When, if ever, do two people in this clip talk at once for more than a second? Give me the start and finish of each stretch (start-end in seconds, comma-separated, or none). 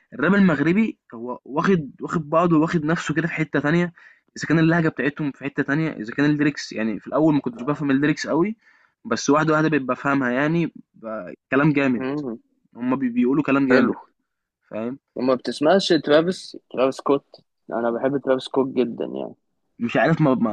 none